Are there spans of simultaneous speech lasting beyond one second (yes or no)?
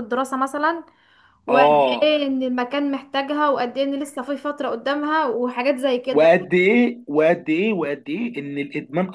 no